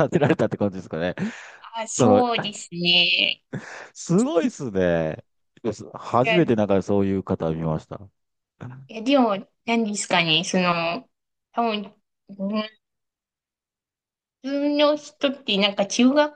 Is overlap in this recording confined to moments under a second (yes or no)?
yes